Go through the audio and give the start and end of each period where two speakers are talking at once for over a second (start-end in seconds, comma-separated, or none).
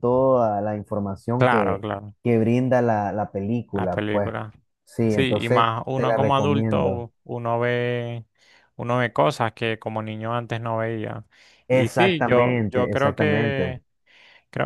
5.1-7.1, 11.7-13.8